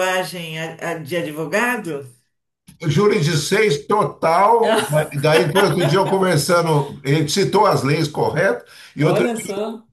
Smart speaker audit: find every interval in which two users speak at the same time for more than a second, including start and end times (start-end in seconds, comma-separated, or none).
none